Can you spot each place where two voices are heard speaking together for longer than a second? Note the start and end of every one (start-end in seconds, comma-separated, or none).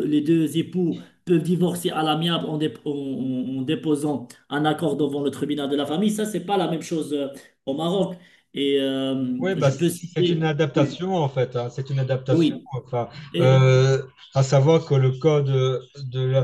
9.4-11.0